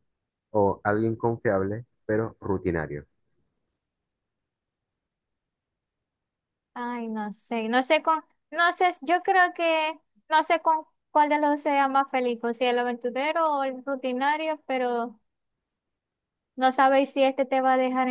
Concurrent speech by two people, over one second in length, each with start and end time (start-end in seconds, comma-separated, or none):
none